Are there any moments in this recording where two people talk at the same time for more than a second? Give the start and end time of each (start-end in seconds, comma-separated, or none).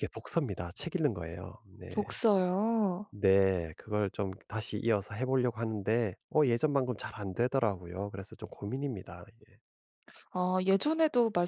none